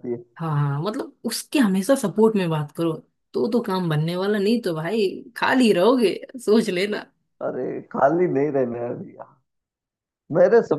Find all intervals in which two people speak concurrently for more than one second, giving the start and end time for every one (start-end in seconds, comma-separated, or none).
none